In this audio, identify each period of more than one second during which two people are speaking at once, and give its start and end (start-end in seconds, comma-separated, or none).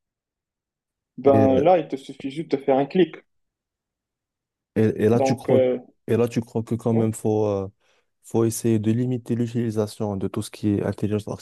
none